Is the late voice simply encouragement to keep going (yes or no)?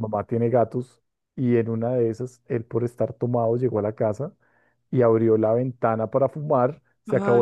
yes